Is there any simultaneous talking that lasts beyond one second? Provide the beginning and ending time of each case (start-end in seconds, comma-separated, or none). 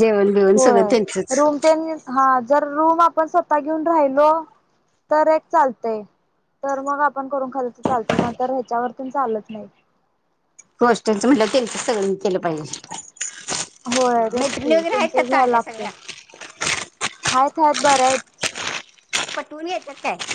14.4-15.9